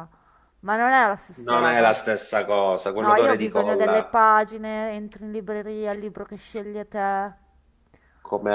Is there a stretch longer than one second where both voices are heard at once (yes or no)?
yes